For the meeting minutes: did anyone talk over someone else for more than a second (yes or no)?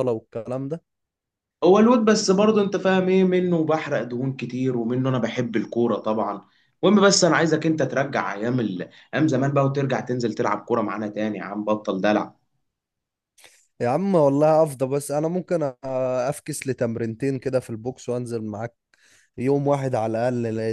no